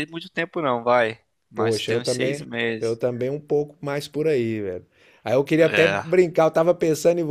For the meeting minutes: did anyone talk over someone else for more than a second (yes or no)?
yes